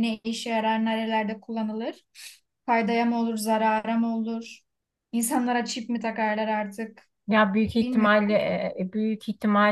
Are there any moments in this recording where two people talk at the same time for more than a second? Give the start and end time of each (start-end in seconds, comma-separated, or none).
none